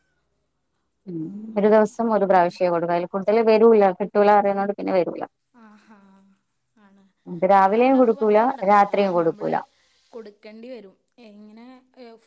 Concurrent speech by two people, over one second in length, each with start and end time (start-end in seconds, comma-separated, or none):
7.6-9.5